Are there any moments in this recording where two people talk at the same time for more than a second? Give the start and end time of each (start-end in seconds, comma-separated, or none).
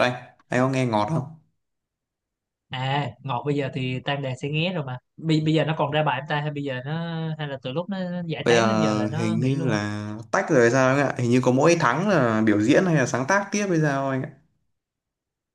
8.4-9.8